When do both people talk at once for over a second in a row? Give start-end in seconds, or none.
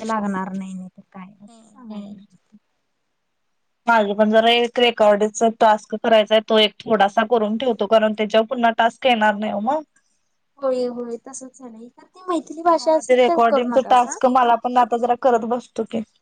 12.7-14.2